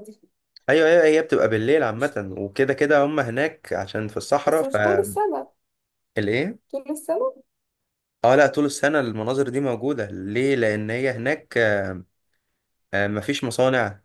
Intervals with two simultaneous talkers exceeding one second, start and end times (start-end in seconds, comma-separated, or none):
none